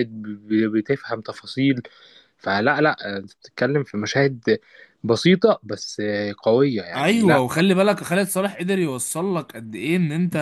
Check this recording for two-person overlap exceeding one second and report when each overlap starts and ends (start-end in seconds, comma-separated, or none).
none